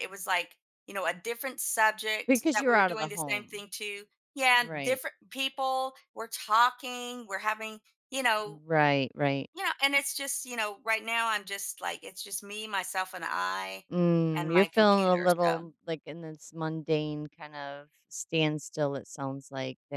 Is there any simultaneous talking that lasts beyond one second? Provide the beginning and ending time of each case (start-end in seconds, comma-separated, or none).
2.3-3.6, 14.4-15.6